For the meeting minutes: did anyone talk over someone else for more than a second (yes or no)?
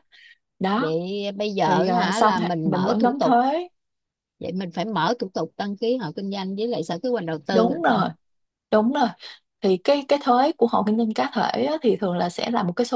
yes